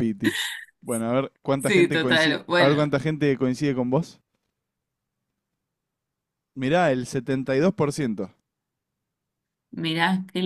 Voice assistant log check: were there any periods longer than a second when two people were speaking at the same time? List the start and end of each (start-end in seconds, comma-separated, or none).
1.6-3.0